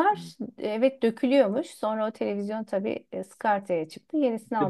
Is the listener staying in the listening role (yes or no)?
no